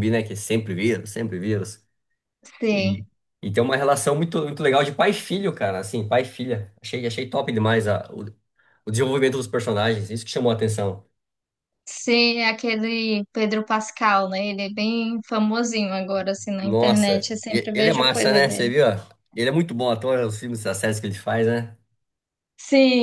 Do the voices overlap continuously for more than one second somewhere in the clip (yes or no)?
yes